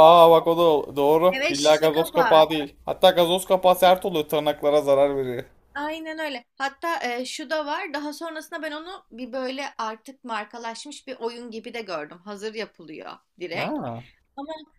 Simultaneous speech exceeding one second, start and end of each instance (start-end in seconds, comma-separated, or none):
1.3-2.5